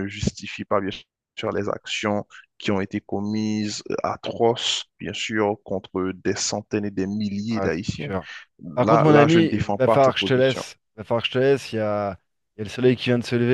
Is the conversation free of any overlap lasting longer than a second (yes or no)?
no